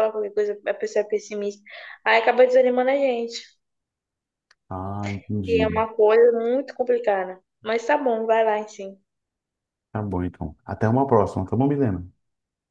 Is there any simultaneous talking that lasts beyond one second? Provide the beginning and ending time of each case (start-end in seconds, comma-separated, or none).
none